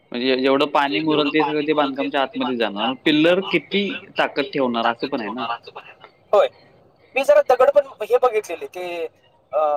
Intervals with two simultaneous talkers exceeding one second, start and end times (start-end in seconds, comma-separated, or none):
none